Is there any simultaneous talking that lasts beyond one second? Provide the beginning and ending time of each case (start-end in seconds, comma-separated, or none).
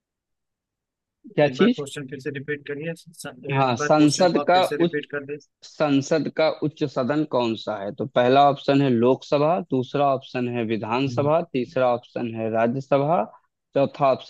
3.5-5.0